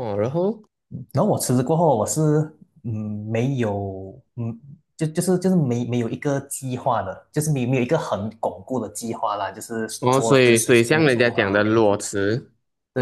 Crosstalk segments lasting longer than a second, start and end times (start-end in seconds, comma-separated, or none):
10.0-11.7